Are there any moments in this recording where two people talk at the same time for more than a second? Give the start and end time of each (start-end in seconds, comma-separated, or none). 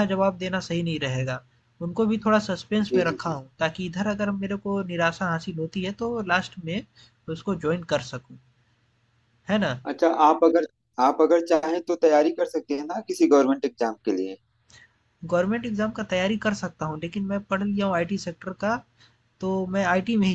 none